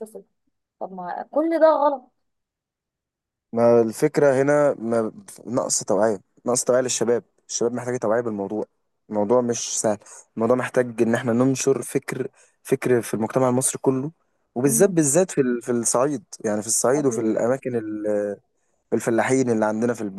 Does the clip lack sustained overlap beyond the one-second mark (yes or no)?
yes